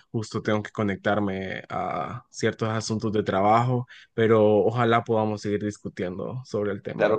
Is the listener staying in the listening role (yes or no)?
no